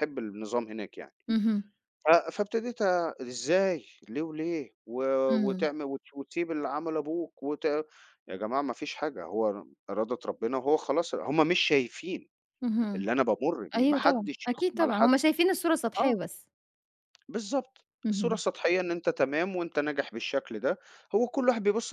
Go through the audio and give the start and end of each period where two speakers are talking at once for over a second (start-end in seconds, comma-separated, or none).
13.8-15.2